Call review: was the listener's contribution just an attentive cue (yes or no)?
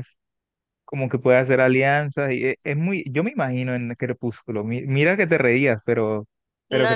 no